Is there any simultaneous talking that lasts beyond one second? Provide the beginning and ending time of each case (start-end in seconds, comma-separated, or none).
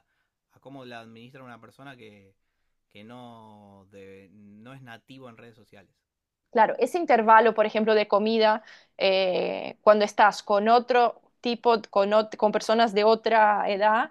none